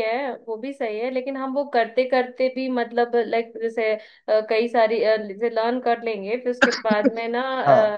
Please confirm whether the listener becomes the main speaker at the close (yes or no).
no